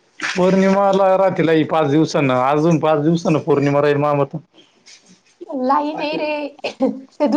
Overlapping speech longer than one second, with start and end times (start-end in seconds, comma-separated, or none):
none